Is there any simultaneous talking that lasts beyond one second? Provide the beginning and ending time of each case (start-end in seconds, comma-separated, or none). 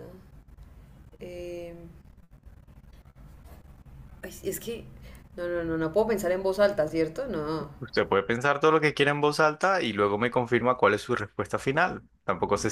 none